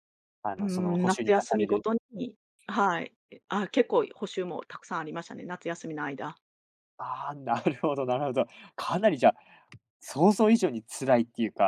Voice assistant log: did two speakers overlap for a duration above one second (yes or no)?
yes